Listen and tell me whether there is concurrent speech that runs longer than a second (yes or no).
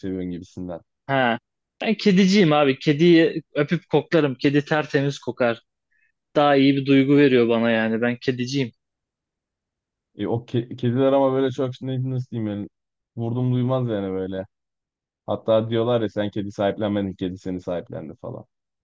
no